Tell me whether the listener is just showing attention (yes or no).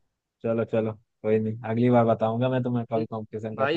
no